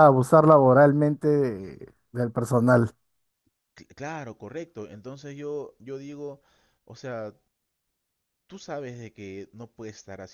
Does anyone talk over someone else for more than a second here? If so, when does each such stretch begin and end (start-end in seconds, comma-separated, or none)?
none